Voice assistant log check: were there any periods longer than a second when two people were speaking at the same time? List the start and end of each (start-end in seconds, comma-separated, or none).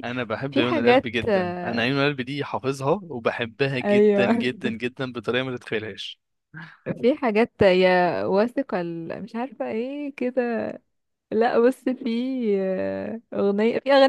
0.5-1.9